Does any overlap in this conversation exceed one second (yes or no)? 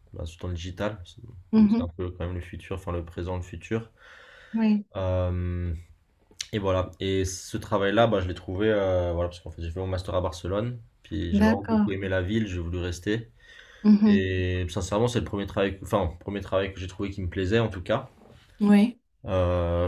no